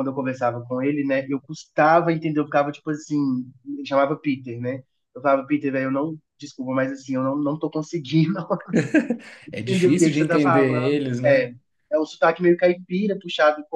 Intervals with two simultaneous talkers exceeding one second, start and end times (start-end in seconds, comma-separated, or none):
9.6-11.5